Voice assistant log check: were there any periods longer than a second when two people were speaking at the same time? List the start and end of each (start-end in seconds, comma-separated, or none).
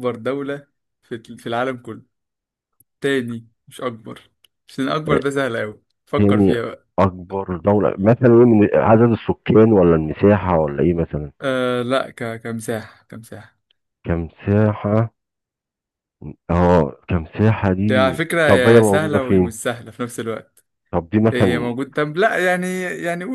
17.9-19.5